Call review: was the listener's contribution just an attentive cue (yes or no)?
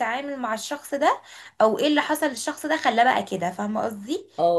yes